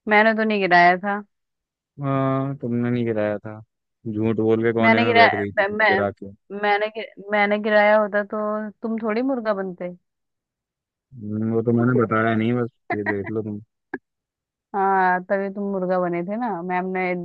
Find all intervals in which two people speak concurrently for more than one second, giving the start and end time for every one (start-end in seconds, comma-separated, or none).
4.8-6.0